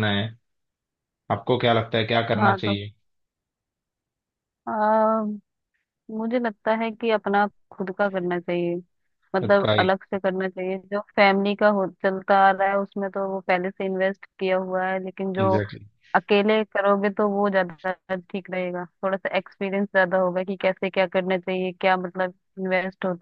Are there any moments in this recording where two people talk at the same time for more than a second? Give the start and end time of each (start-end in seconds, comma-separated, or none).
none